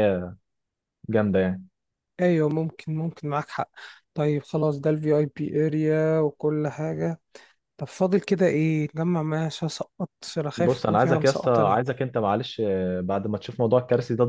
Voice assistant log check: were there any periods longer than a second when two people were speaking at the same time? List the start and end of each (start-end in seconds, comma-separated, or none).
10.6-11.8